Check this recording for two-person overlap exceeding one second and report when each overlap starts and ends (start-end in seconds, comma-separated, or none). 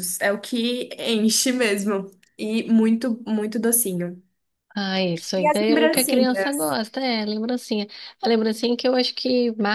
5.3-6.6